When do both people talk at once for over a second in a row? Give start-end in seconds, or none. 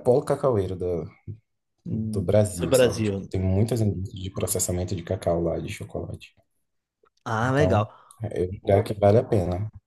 1.9-3.4